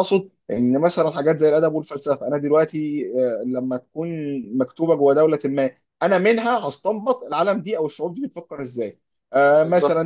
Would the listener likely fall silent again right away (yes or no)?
yes